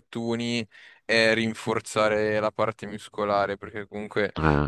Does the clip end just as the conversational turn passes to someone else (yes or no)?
no